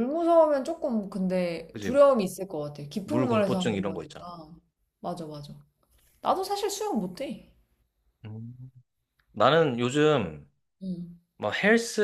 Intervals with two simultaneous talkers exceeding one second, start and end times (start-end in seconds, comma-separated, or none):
3.0-4.2